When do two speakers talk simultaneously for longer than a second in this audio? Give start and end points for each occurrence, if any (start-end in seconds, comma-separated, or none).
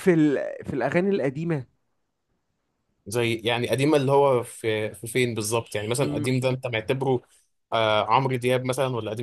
none